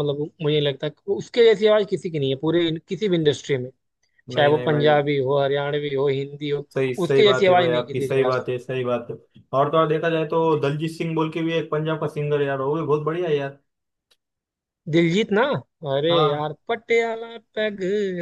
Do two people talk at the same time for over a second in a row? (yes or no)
yes